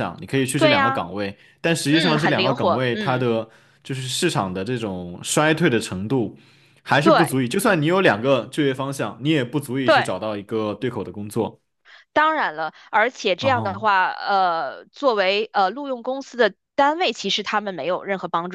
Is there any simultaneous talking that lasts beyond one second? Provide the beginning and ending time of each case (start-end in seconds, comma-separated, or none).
1.9-3.2